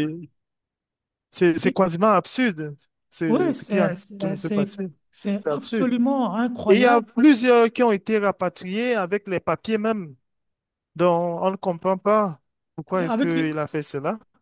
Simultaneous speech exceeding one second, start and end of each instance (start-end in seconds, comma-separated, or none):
3.3-4.7